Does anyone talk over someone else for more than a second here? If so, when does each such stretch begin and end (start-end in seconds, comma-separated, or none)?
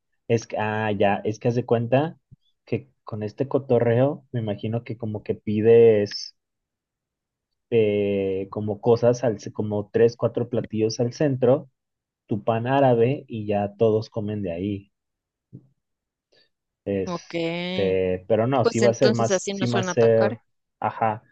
18.6-20.4